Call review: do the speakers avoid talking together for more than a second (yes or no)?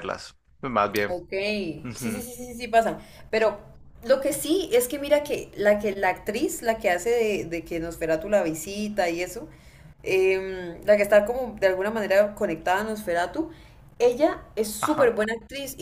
yes